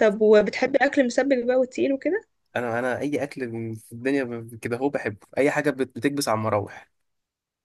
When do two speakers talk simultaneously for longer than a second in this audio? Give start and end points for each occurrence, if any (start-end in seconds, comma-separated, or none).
none